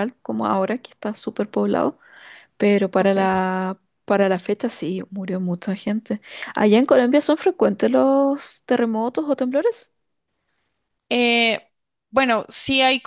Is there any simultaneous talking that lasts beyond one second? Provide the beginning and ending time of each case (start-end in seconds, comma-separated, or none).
none